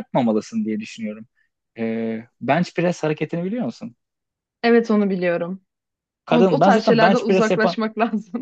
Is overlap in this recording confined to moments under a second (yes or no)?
no